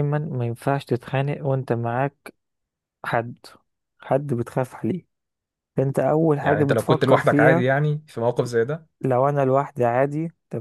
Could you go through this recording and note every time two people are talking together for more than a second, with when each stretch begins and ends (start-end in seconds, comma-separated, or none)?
6.4-7.7